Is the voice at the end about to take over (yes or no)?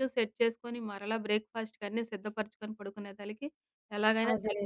no